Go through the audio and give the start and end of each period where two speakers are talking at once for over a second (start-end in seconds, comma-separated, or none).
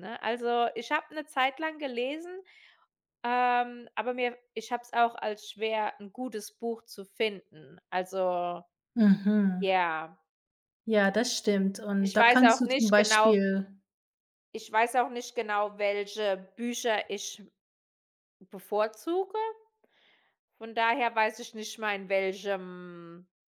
12.0-13.4